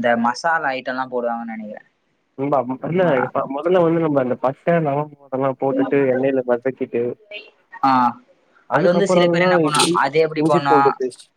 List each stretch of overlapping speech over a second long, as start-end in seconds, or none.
8.8-10.8